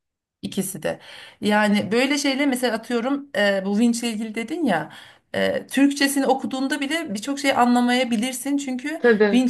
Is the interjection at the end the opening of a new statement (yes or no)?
no